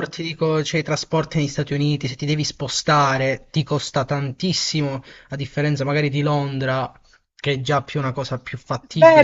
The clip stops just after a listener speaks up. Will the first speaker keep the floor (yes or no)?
no